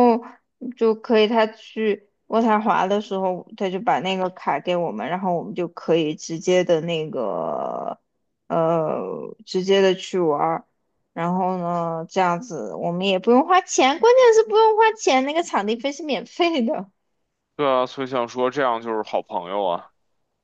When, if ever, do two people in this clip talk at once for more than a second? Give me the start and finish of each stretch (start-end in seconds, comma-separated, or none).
none